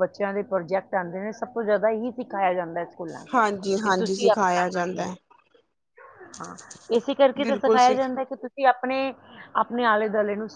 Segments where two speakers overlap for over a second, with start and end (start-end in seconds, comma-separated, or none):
3.3-5.0